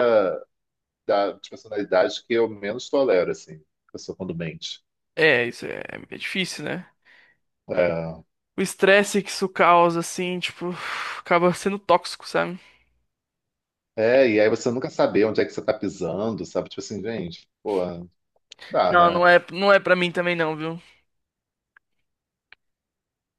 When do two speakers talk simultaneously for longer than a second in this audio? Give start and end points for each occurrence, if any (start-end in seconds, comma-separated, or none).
none